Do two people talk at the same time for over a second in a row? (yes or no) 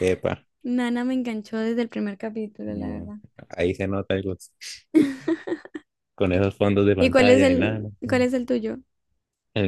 yes